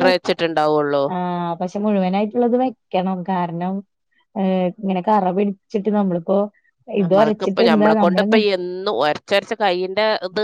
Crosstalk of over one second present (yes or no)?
yes